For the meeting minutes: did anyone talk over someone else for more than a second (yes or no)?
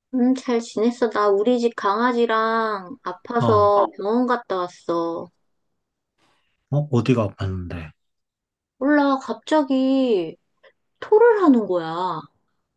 no